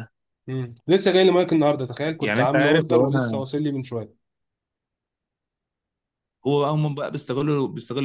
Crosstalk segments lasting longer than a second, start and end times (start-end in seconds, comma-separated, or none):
2.2-3.4